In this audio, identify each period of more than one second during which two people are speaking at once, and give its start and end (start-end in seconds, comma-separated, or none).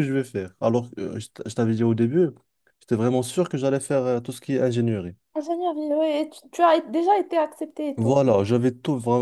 none